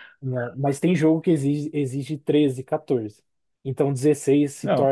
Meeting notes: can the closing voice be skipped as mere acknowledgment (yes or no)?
no